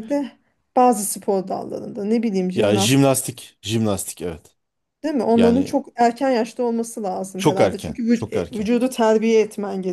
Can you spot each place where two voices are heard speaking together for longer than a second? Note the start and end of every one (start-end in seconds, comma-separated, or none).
7.4-8.7